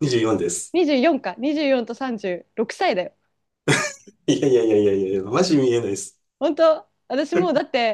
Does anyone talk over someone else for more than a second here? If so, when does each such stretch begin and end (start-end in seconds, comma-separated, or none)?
none